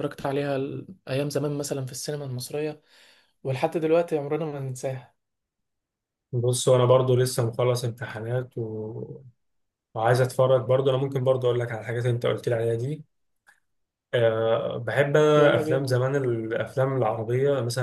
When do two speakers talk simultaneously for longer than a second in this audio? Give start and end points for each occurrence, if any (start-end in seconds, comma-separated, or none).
none